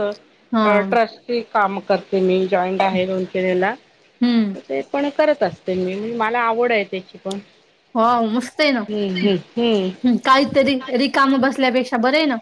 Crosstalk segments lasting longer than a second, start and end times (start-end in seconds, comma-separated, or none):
none